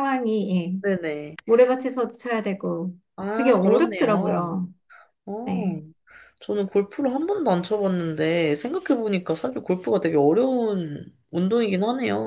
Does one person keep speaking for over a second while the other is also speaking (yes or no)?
yes